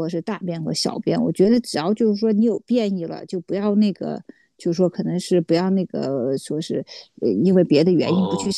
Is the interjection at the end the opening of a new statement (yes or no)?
no